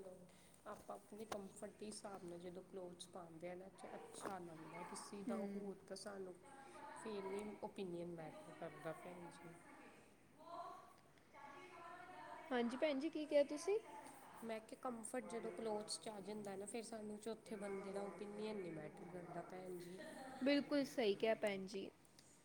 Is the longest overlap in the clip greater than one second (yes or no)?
no